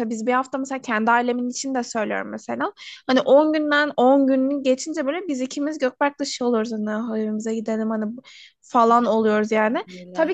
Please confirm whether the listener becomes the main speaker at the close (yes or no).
no